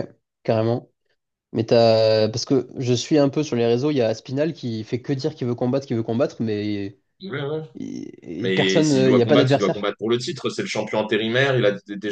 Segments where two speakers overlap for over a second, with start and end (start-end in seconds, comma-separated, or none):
8.4-9.9